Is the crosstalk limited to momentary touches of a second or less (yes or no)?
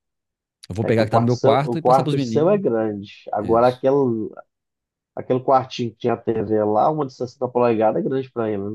no